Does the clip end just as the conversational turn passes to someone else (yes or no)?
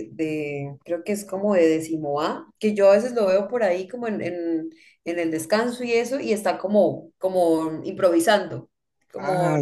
yes